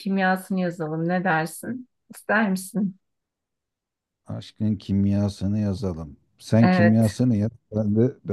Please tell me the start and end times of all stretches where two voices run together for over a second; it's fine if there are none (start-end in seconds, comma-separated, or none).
none